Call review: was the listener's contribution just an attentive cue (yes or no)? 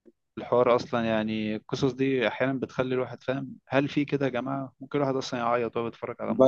no